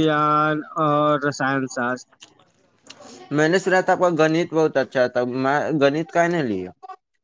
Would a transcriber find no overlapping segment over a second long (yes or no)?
yes